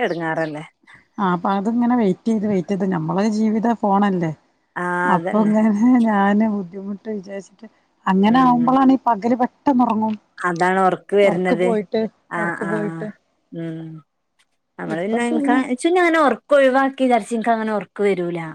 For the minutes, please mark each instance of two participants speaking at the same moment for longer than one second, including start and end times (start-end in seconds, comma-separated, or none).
none